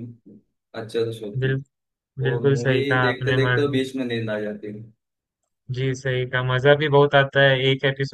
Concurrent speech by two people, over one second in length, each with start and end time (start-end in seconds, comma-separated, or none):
2.3-3.8